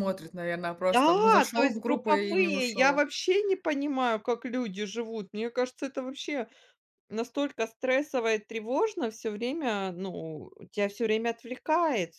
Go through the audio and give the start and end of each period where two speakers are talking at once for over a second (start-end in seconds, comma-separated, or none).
0.9-3.1